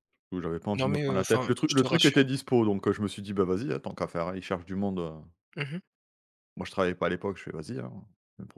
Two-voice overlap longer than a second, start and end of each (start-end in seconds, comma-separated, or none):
0.8-2.3